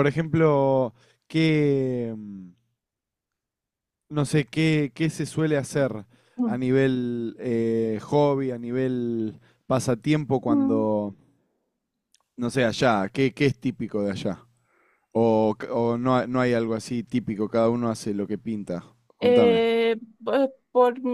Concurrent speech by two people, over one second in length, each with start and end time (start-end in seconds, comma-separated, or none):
none